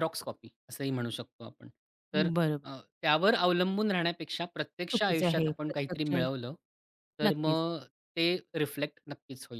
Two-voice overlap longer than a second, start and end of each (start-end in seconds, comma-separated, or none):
4.9-6.1